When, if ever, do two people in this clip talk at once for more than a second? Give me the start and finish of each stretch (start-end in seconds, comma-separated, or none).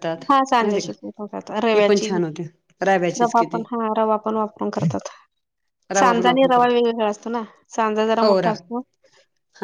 0.6-2.1